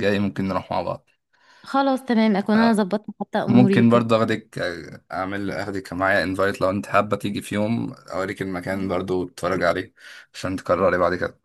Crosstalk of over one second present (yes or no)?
no